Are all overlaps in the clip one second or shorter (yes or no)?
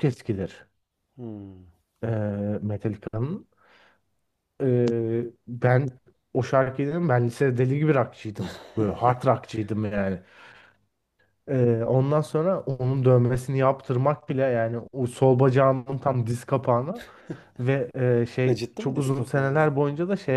no